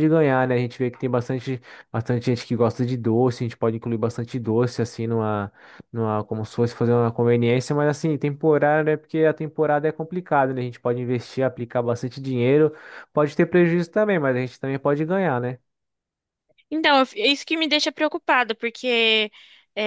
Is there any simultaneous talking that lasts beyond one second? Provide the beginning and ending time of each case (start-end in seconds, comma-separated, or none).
none